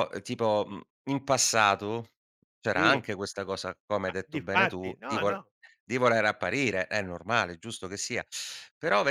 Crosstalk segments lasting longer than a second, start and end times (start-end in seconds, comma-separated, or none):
4.0-5.4